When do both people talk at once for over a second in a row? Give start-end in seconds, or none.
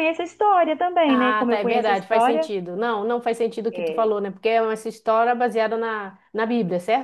1.1-2.5